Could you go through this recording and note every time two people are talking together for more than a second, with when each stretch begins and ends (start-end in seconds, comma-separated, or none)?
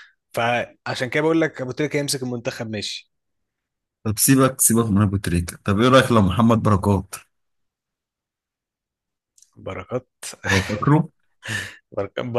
none